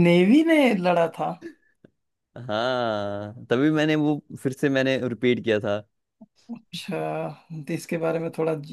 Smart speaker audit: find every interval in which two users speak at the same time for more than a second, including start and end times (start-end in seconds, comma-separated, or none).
none